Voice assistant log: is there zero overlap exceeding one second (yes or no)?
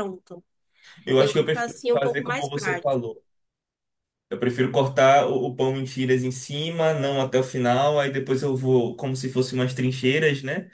no